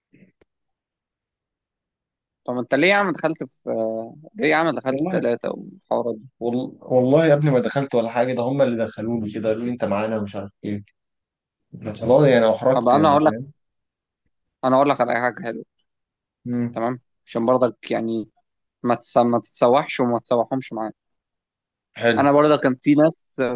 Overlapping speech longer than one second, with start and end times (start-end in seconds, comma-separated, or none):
none